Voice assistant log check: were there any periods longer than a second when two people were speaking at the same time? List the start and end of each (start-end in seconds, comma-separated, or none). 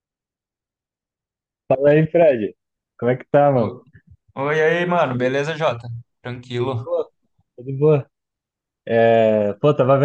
none